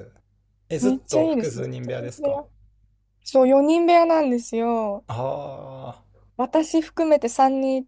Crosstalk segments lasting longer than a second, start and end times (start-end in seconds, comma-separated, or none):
0.8-2.4